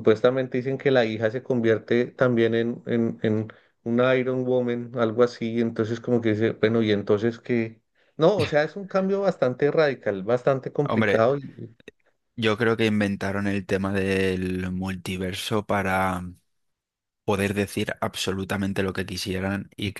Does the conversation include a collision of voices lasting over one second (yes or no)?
no